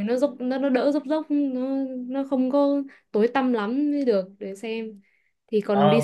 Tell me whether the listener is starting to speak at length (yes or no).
yes